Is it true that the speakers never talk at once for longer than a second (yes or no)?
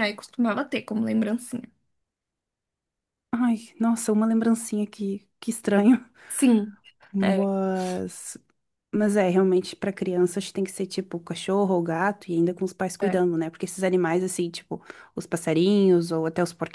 yes